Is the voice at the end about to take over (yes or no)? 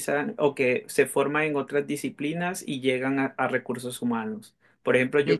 no